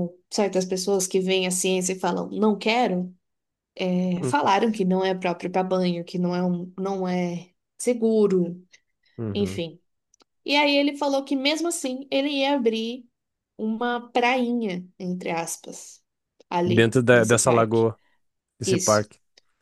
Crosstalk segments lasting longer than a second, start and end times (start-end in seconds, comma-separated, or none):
16.6-17.9